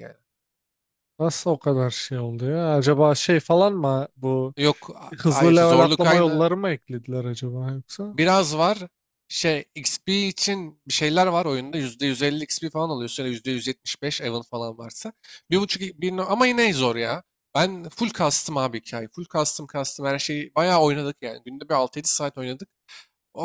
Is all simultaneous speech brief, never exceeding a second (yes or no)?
no